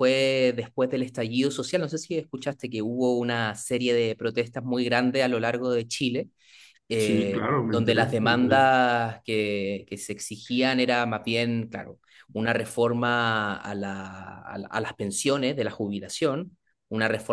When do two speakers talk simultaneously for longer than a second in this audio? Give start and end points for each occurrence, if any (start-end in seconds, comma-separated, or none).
7.0-8.7